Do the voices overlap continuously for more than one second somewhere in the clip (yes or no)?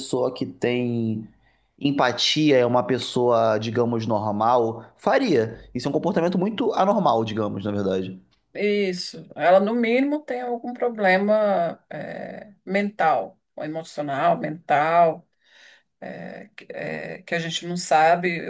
no